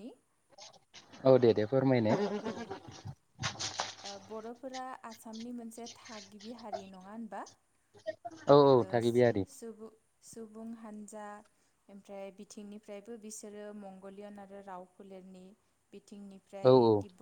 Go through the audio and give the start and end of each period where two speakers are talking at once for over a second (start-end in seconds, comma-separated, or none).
none